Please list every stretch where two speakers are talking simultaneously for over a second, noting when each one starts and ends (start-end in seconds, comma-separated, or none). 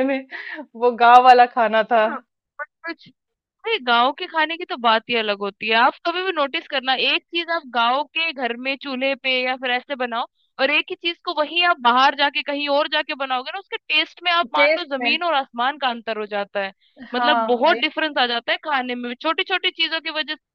none